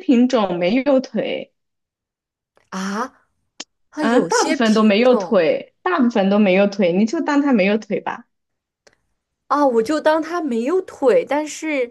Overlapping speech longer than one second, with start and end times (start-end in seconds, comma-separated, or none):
4.0-5.4